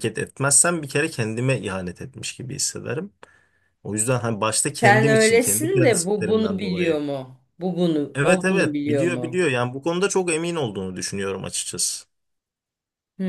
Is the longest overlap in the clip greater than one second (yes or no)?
yes